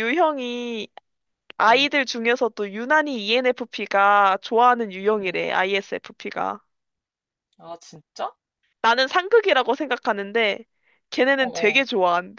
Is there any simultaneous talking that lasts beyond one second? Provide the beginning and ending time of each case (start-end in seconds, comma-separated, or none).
none